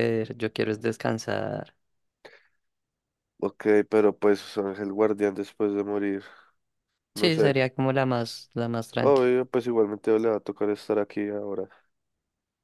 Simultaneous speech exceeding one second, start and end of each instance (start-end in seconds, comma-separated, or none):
none